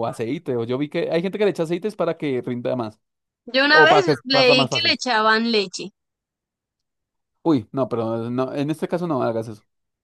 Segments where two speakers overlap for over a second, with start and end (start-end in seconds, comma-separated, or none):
3.7-5.0